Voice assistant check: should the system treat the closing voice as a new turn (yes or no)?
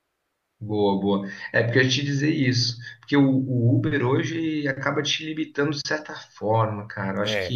no